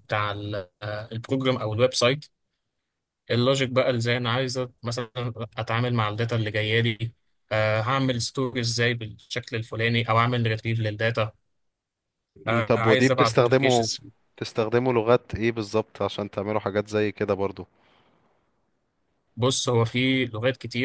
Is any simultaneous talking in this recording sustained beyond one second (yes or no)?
yes